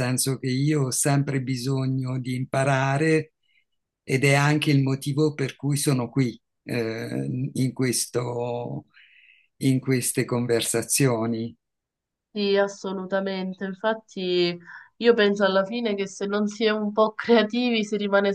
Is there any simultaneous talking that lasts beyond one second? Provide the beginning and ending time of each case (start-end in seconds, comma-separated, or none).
none